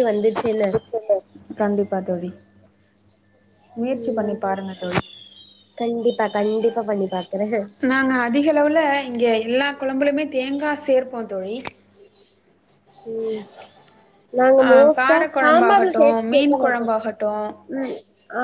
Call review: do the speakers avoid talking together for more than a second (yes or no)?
no